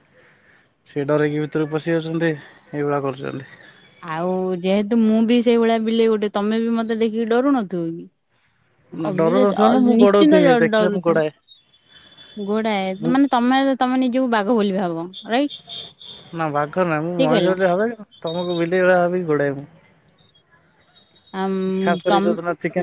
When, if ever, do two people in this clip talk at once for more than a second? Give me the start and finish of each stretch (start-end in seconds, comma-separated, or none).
9.1-11.2